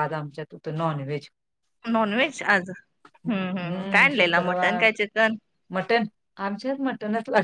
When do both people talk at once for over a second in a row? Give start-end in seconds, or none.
3.3-4.9